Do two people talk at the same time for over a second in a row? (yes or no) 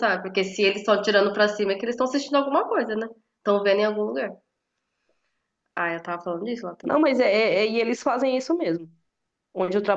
no